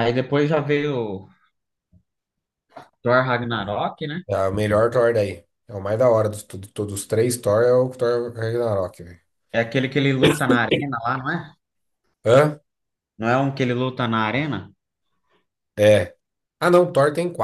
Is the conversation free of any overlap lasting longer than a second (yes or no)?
yes